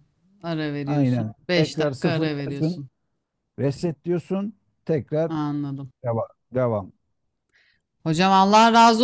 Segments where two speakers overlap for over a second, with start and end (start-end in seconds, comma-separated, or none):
0.8-2.8